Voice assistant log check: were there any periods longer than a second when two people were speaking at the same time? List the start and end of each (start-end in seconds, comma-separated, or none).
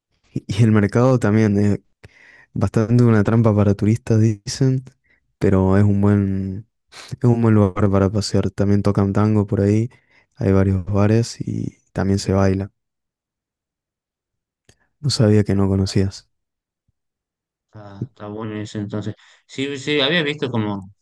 none